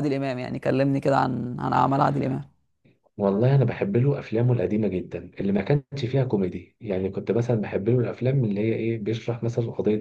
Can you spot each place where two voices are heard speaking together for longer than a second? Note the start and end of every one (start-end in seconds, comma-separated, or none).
none